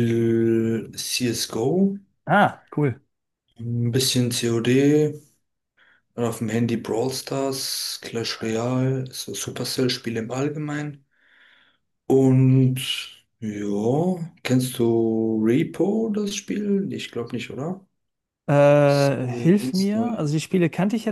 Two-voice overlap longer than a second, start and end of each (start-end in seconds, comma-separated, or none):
18.8-20.2